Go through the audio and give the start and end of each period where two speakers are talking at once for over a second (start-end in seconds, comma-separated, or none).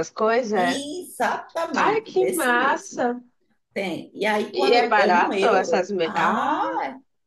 1.7-3.1, 4.5-6.6